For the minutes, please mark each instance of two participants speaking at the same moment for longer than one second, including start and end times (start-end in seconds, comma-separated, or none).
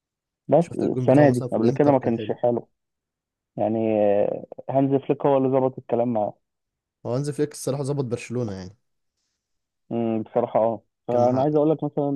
0.6-2.3